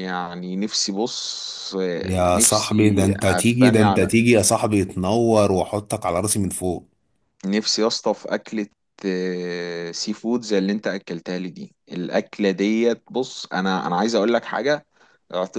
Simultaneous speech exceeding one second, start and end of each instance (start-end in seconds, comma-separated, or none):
2.0-4.2